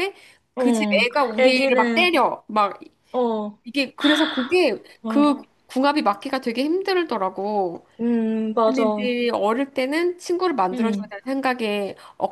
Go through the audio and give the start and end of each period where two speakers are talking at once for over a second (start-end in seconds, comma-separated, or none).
0.6-2.1